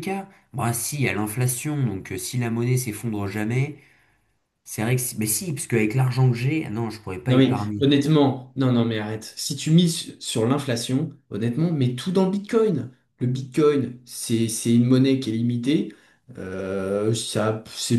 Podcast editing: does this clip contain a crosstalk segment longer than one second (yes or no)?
no